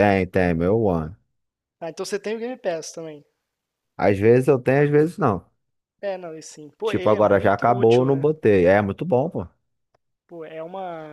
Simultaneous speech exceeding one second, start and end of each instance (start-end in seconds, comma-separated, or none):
6.8-8.3